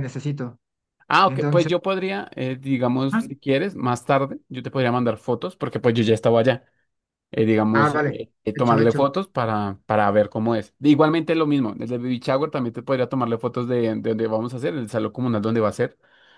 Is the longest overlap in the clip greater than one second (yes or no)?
yes